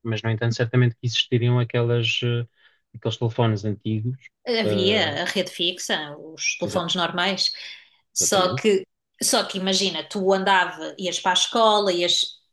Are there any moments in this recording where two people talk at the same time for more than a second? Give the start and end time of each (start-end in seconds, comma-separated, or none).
none